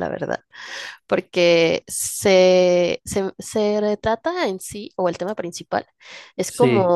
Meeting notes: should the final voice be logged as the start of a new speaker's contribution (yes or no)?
no